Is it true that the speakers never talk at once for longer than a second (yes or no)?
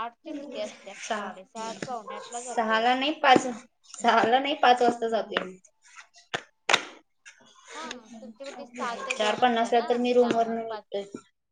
no